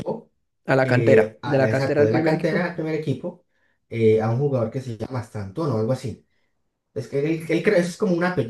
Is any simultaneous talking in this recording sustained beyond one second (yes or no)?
yes